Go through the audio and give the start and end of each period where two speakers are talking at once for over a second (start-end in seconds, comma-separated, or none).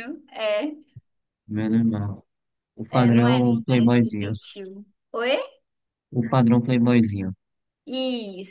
2.9-4.3